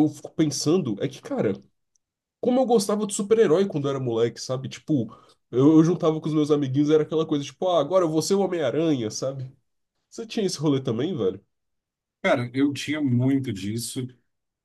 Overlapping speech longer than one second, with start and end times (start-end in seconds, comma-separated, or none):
none